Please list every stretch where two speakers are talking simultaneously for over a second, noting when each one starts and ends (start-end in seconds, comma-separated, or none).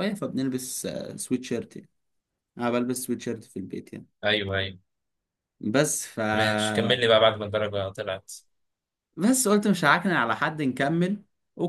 none